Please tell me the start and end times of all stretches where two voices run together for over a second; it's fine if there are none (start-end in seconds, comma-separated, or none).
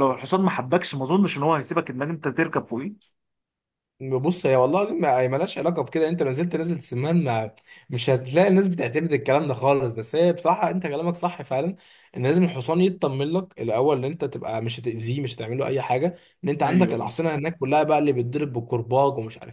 none